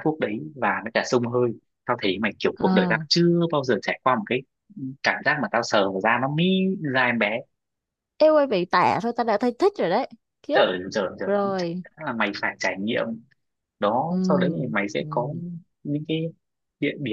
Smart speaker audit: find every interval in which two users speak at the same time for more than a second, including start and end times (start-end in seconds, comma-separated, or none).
none